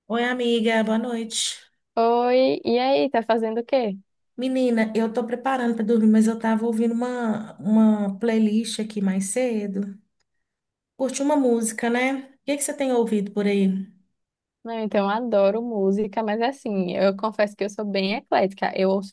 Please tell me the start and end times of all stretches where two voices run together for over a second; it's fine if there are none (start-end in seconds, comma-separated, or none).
none